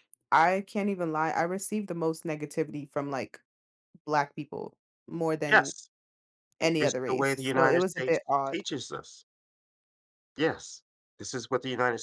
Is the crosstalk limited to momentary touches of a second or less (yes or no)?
no